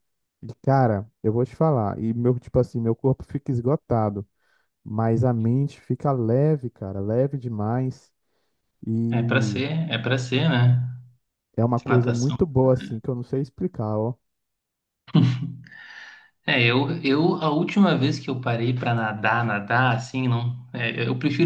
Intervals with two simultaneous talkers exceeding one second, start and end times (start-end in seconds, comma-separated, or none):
none